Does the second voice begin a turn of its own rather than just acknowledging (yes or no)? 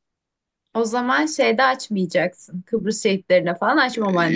yes